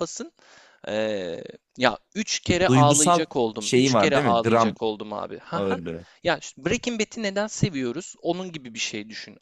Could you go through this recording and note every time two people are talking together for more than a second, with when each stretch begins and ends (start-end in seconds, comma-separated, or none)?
2.7-4.8